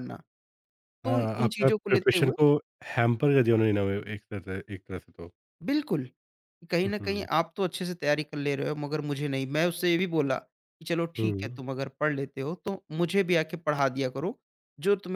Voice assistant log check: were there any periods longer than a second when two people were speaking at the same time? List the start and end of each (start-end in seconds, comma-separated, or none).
1.1-2.3